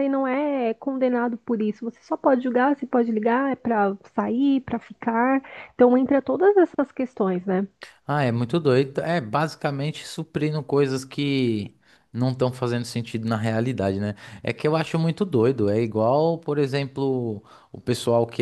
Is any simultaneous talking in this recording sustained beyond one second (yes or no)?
no